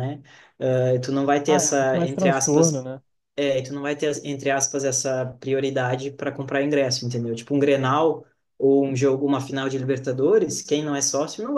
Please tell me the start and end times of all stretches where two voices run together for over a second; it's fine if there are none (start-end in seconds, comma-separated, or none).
1.4-2.9